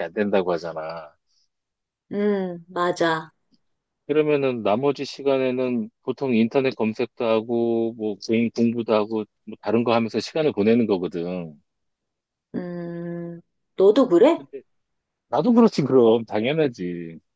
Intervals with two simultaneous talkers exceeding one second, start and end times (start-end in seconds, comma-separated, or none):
none